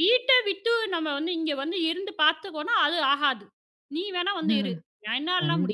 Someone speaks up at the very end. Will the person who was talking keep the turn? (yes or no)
no